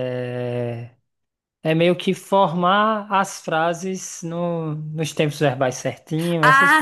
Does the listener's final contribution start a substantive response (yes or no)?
yes